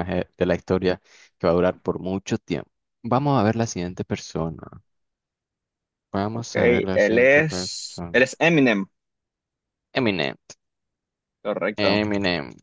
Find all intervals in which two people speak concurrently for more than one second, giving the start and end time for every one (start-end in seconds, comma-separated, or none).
6.3-8.2